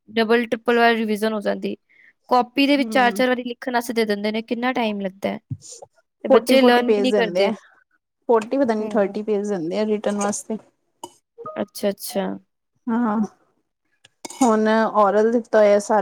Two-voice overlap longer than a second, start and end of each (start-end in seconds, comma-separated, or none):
6.3-7.5